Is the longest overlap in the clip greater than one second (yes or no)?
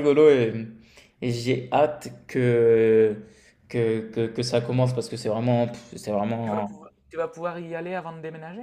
no